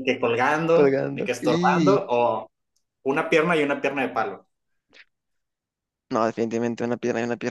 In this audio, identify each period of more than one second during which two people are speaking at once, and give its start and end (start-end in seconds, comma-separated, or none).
0.7-2.0